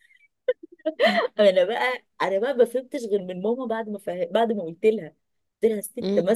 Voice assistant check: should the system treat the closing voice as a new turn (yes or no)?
no